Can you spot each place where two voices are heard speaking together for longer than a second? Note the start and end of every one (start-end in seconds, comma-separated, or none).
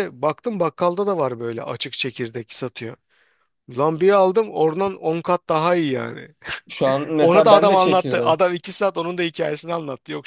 7.2-8.4